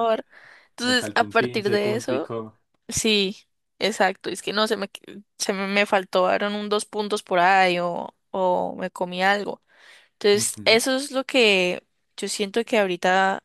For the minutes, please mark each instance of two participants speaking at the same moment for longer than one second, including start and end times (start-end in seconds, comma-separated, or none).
0.8-2.3